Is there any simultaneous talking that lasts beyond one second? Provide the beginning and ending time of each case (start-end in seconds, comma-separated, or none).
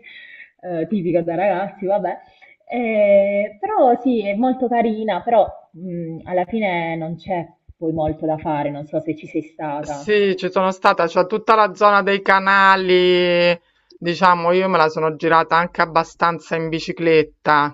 none